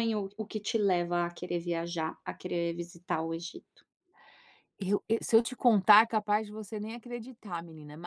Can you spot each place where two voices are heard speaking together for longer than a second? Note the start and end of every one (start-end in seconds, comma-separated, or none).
none